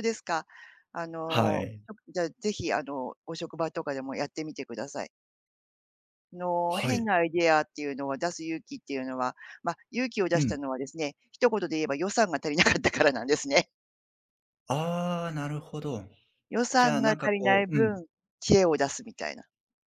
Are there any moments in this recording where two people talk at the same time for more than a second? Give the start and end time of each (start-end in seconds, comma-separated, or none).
16.8-18.0